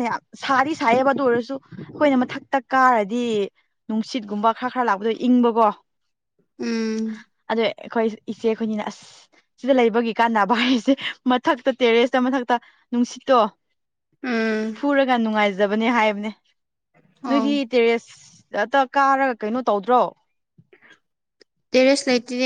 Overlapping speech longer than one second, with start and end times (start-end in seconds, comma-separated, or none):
none